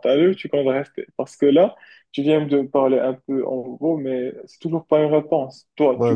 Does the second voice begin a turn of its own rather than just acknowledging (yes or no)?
yes